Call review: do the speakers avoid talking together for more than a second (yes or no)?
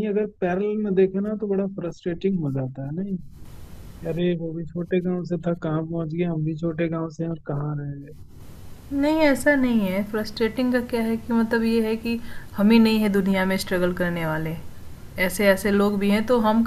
yes